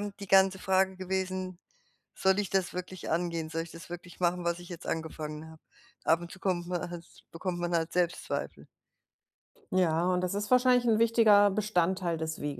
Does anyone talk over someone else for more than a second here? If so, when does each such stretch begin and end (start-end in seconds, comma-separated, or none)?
none